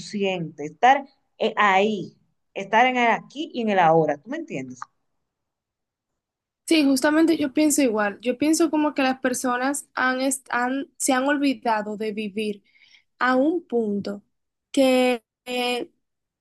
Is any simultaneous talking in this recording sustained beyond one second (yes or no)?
no